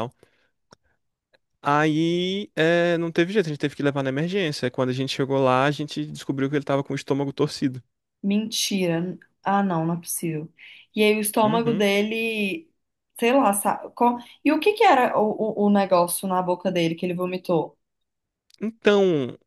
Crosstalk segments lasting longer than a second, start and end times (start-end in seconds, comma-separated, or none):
none